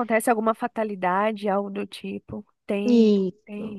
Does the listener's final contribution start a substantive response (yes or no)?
yes